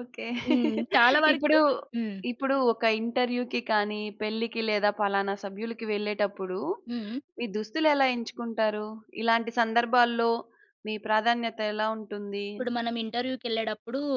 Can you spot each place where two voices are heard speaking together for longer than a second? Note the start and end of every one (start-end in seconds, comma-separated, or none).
none